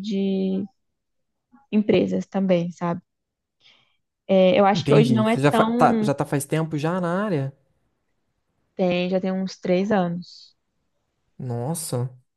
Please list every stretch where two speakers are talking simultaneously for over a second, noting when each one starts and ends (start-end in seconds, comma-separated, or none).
4.7-6.1